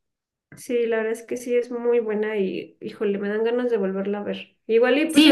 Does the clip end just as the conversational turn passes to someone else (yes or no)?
yes